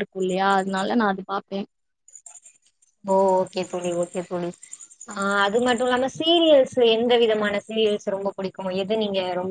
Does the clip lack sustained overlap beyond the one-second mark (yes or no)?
yes